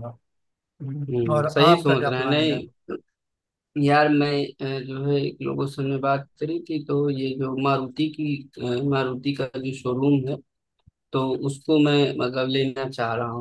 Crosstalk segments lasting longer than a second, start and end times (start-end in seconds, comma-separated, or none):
1.1-2.6